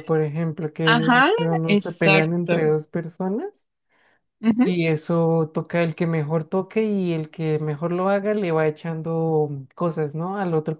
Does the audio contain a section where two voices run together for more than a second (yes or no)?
yes